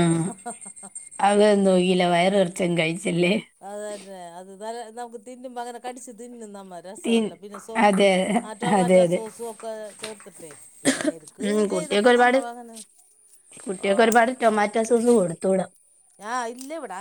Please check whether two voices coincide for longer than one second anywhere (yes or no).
no